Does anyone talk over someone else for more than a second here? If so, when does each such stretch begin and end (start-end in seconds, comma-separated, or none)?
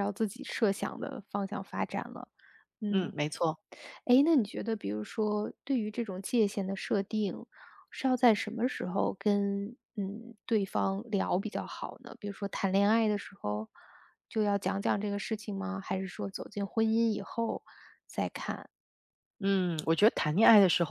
none